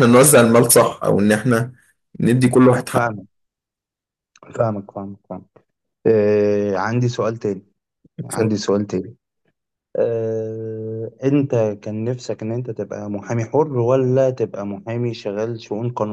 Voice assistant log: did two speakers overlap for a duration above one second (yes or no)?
no